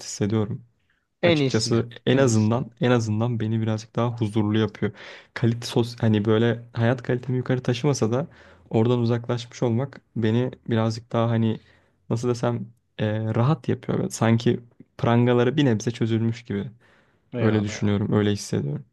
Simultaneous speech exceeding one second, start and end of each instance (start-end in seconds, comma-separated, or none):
1.2-2.7